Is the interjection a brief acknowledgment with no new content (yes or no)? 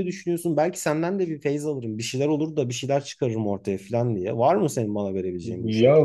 no